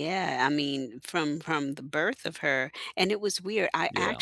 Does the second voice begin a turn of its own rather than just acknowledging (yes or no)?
no